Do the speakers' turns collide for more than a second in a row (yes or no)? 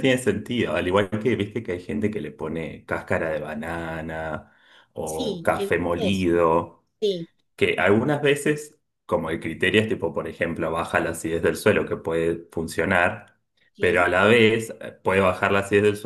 yes